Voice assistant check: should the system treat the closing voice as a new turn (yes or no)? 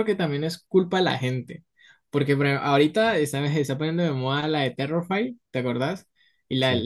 no